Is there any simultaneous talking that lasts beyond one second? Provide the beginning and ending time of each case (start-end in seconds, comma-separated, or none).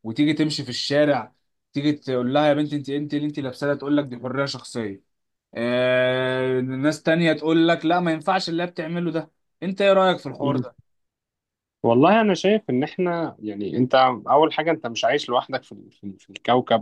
none